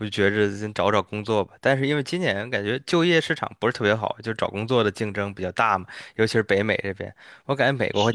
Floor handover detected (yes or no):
no